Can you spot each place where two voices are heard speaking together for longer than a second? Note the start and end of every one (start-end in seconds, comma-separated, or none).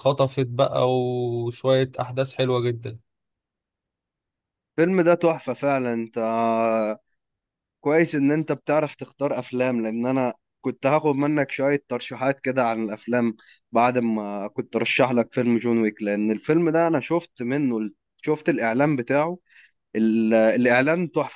none